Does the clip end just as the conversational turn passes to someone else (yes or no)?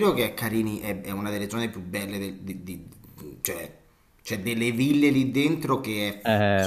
yes